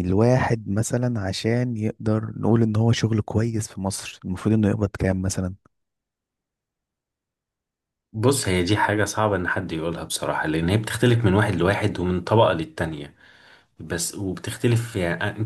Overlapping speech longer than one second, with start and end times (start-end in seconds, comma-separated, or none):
none